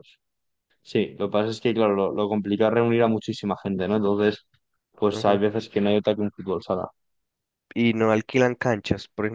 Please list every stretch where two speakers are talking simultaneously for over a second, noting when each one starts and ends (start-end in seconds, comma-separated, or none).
none